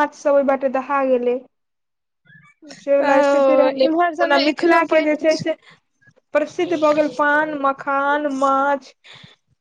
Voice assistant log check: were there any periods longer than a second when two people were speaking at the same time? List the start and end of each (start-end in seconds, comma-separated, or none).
3.1-5.4